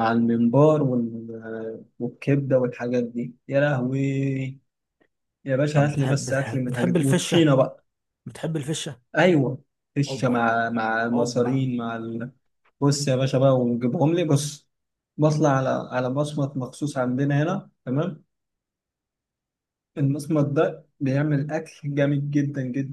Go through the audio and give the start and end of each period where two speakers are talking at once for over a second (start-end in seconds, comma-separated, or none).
5.7-7.5